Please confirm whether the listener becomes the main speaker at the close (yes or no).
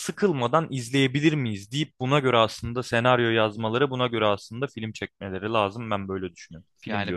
yes